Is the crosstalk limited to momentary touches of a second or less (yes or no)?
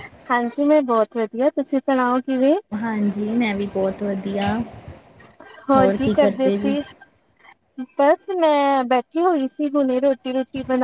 yes